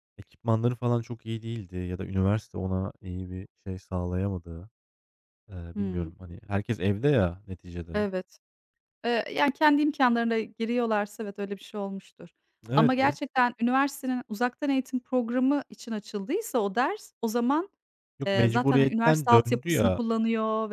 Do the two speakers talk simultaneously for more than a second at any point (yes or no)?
yes